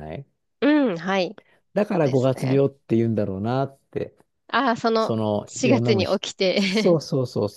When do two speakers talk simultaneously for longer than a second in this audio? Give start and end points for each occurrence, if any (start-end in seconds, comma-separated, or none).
5.0-7.0